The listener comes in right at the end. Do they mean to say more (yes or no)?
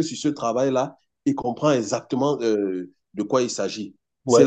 yes